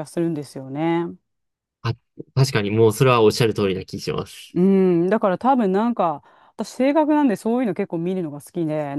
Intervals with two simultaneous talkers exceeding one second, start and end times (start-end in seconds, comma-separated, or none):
none